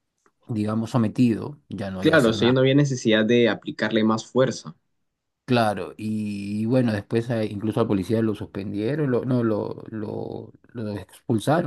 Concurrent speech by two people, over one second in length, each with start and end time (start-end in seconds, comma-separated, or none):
none